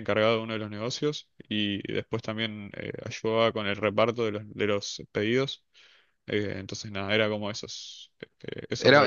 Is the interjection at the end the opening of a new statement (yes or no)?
yes